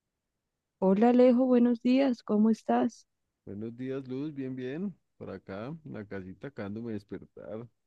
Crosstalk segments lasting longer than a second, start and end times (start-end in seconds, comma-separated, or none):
none